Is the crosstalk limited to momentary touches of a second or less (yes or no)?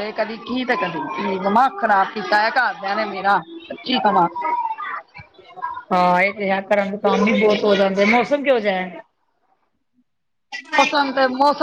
yes